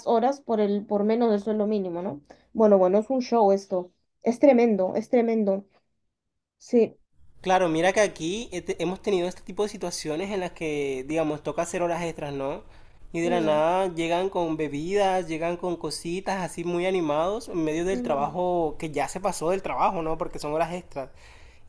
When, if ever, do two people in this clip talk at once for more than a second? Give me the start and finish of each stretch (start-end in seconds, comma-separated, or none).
none